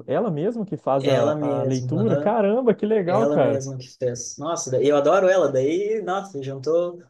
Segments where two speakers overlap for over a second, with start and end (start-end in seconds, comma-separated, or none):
1.0-2.4